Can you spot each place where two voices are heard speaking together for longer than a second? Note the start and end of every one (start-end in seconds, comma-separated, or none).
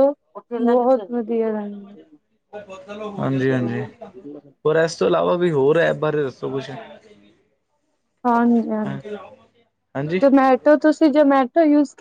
none